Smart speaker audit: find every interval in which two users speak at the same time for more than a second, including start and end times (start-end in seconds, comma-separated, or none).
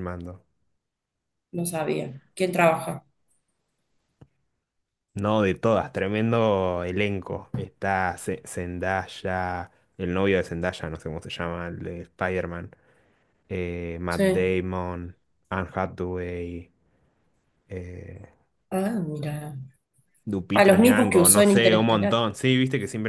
20.5-22.2